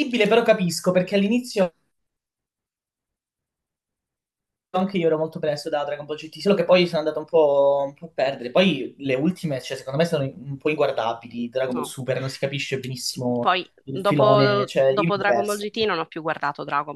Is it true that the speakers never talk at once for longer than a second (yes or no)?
no